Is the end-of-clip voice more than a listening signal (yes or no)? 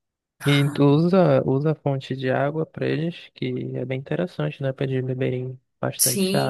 yes